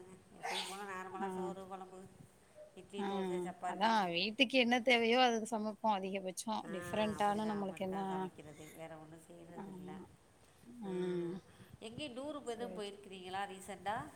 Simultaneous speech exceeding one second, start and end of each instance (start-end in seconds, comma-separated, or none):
none